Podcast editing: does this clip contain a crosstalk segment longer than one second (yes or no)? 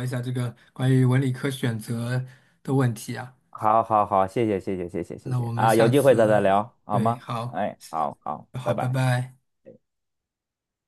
yes